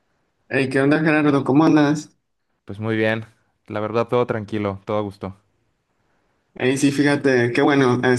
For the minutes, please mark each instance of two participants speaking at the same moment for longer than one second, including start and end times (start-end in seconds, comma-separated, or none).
none